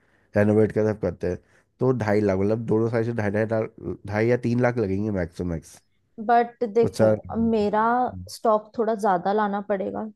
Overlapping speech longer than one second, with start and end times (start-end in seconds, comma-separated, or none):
none